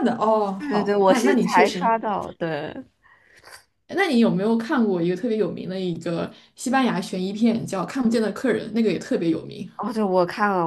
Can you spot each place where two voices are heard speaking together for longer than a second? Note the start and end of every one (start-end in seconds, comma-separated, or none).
0.6-1.9